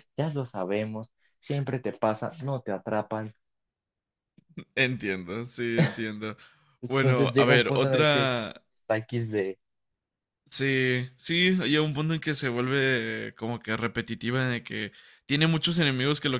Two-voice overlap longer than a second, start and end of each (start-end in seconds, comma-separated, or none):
6.8-8.5